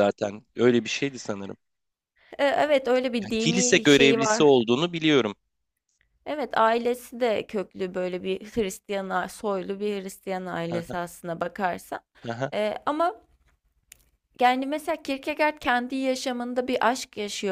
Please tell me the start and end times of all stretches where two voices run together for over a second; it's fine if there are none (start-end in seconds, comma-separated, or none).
3.2-4.5